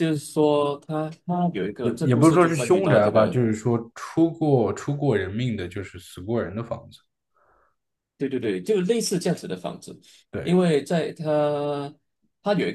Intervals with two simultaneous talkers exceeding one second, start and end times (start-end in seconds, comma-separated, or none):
1.8-3.4